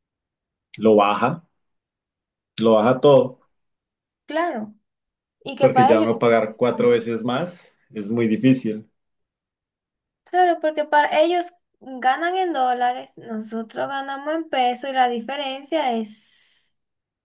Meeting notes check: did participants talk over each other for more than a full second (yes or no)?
yes